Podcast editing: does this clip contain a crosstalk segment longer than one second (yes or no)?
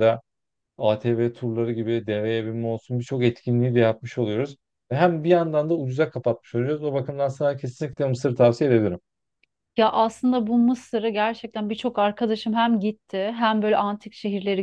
no